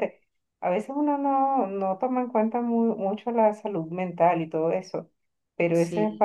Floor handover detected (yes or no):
no